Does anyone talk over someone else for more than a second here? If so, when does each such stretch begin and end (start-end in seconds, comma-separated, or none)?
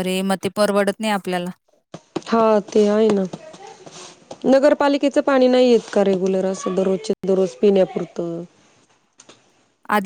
none